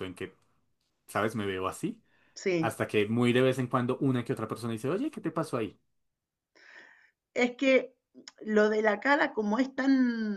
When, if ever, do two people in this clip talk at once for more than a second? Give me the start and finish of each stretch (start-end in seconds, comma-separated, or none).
none